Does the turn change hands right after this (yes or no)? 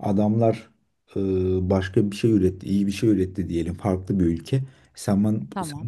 no